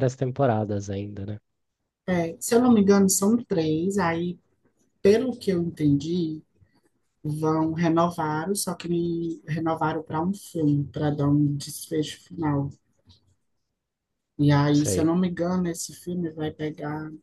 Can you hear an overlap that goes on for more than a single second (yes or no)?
no